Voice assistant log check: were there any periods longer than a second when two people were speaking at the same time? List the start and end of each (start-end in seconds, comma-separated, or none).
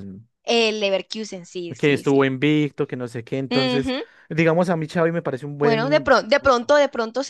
none